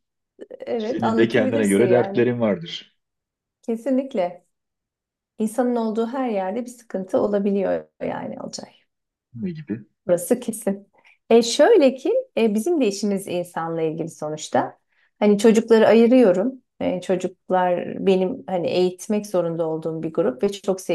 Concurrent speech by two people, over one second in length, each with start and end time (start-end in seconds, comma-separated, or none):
0.8-2.3